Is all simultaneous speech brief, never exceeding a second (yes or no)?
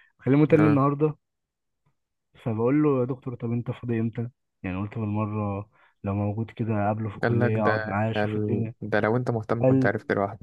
no